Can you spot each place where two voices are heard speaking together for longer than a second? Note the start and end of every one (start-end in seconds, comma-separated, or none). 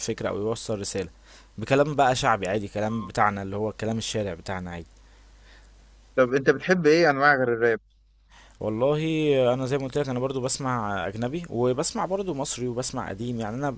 none